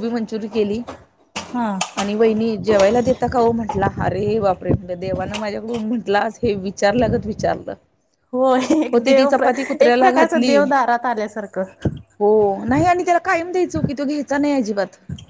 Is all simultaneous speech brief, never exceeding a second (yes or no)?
no